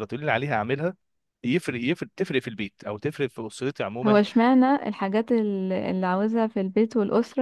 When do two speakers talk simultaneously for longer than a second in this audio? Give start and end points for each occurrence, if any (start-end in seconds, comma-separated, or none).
none